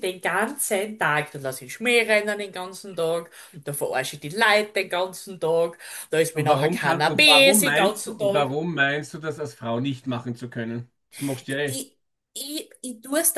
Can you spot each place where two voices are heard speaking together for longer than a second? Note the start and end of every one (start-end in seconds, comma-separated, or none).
6.3-8.6